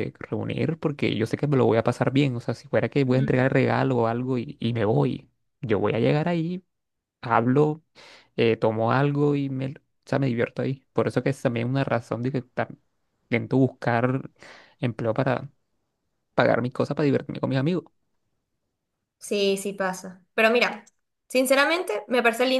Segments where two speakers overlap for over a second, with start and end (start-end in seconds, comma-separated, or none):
none